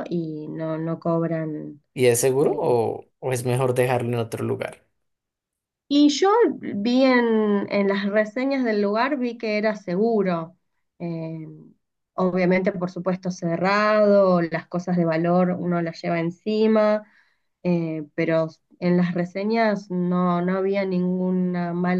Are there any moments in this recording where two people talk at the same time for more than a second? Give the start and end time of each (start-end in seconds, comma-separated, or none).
none